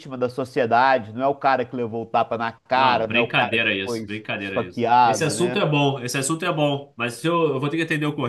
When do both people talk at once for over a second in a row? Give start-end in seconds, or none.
2.7-5.6